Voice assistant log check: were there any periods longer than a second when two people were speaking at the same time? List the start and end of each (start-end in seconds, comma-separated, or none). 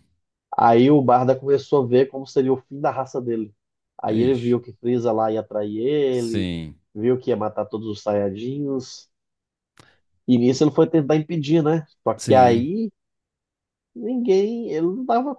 none